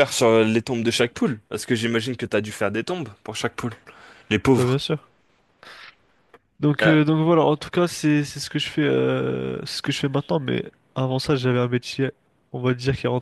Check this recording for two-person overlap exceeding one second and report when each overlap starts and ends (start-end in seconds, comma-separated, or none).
none